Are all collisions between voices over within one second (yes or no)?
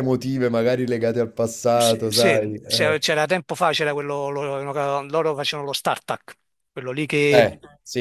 no